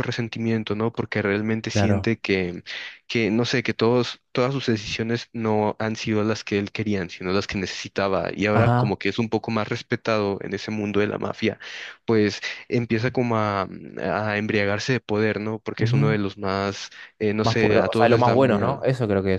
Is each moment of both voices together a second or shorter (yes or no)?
no